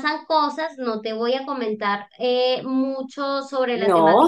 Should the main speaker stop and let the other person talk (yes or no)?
no